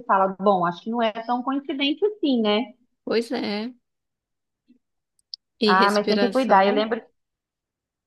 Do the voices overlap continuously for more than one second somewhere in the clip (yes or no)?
yes